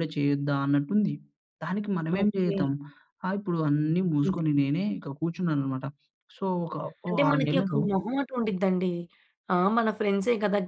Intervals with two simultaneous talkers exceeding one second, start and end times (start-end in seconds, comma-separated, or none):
none